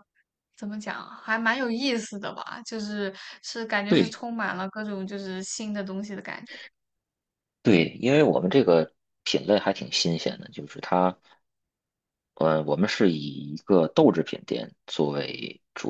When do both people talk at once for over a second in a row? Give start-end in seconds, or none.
none